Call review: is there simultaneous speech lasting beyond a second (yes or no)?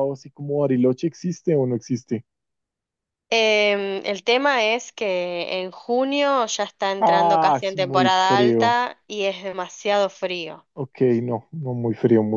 yes